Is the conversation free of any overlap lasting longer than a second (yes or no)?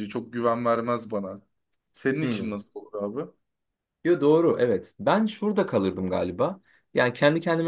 yes